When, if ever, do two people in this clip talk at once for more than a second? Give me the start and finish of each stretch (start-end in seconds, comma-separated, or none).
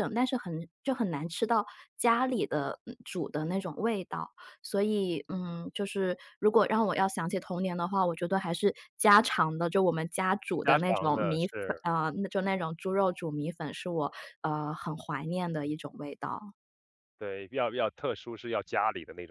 10.6-11.8